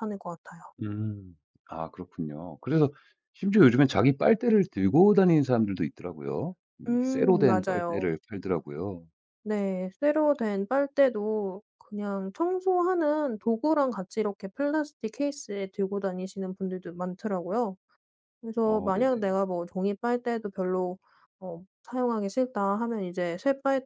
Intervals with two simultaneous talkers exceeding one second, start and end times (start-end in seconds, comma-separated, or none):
6.9-8.1